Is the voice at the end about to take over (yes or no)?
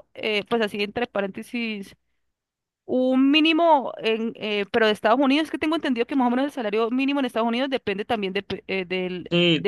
yes